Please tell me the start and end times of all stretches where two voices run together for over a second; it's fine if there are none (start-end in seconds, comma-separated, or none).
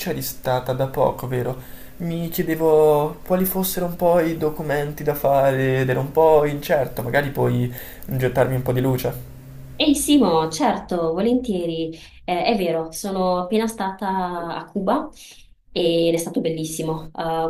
none